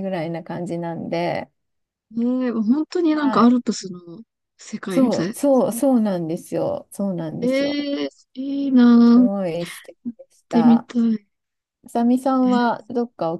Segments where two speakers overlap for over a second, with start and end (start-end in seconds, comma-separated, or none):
none